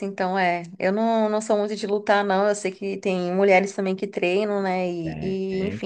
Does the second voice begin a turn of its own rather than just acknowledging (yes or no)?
no